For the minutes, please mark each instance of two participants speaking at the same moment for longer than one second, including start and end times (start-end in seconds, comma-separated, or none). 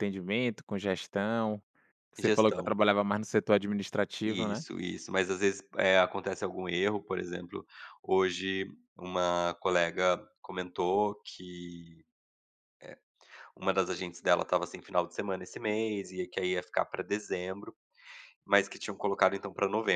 none